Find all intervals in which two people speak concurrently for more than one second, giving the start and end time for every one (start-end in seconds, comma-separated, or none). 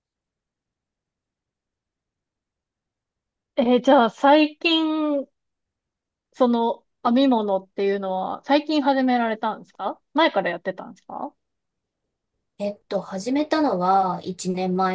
none